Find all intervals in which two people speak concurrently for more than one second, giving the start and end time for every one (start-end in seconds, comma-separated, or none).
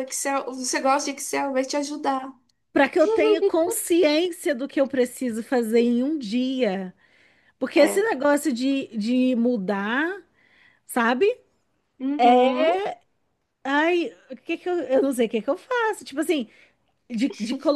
none